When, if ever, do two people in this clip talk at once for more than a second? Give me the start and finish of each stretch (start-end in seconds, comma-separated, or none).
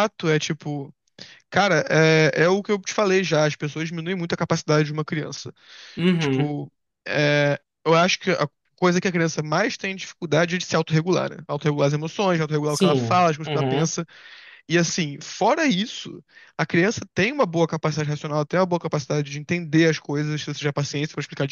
12.7-13.9